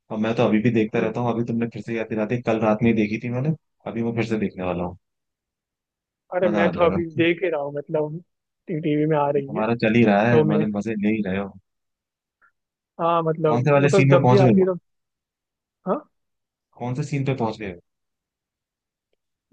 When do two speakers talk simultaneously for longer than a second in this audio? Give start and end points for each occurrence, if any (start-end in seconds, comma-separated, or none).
13.5-14.7